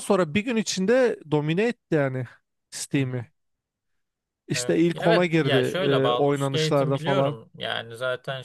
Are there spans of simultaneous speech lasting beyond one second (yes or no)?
yes